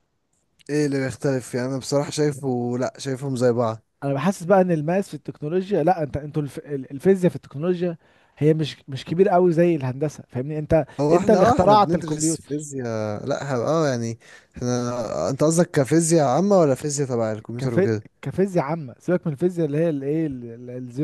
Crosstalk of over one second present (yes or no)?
yes